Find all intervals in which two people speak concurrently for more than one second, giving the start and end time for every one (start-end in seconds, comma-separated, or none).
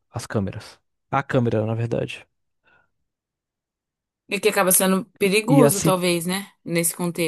none